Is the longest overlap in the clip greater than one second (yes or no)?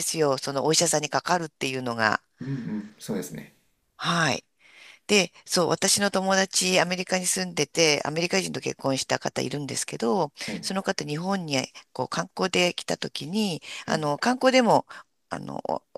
no